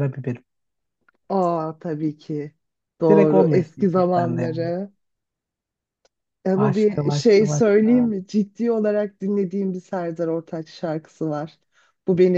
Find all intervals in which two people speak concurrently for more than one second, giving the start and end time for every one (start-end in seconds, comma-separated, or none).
3.1-4.7, 6.5-8.1